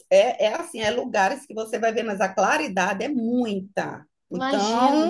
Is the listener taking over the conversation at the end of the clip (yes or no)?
yes